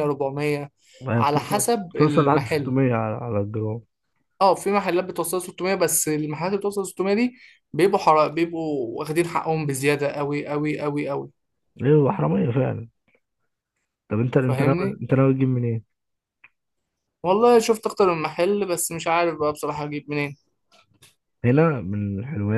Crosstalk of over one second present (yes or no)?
yes